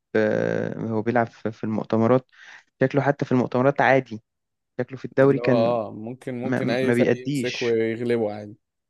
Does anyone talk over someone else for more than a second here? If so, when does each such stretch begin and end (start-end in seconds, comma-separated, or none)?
6.4-7.8